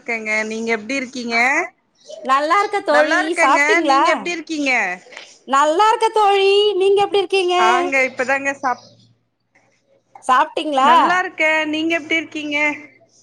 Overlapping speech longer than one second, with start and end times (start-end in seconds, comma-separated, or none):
none